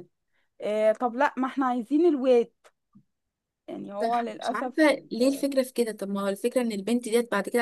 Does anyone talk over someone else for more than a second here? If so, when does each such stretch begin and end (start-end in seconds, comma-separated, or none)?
4.0-5.4